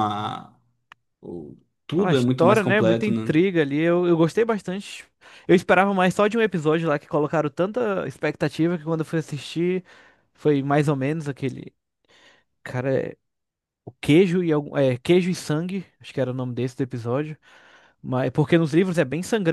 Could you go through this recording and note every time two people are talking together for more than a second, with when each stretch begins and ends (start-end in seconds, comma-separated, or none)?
1.9-3.4